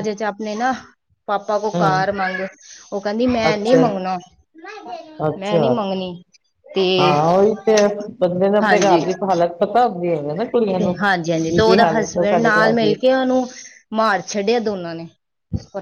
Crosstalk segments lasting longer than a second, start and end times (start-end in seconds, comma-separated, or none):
10.8-12.9